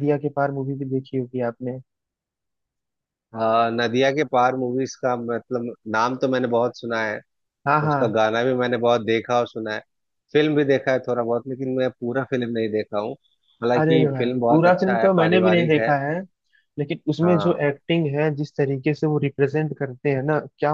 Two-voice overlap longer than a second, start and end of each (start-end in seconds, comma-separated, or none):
13.8-15.9